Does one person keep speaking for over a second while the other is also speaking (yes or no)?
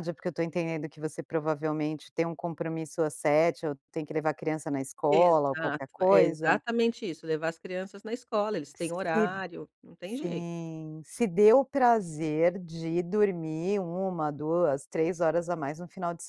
yes